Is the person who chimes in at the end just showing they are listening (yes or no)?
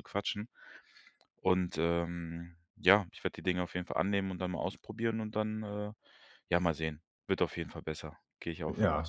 no